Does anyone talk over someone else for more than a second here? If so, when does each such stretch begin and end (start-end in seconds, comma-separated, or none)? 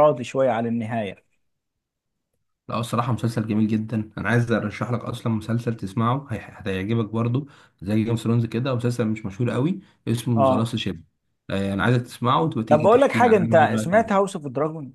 12.7-14.2